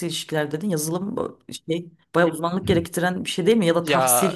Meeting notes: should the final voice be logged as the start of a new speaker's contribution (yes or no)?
yes